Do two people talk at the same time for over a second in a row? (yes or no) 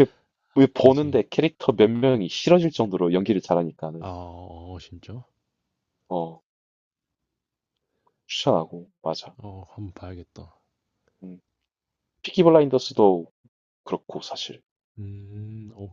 no